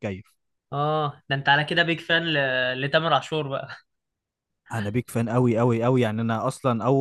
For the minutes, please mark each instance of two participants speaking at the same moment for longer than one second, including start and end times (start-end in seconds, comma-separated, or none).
none